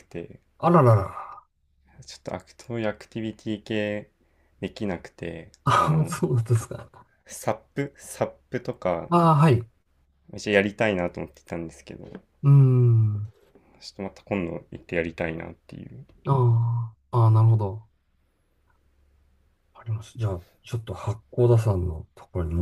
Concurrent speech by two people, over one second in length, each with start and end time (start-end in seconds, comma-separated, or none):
none